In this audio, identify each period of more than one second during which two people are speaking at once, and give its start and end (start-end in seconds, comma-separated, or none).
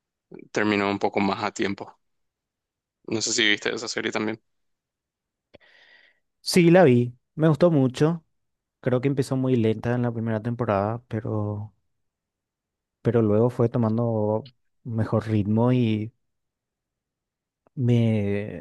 none